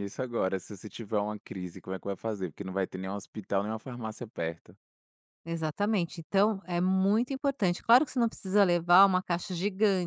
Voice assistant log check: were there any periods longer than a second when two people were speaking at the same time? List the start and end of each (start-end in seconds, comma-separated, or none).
none